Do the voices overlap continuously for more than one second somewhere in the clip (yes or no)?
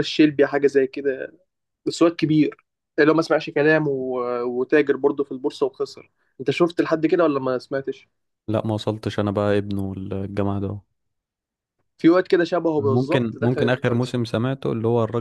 yes